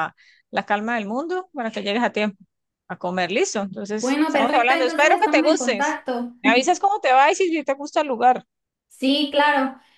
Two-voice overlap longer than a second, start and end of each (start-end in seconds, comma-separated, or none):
4.0-6.0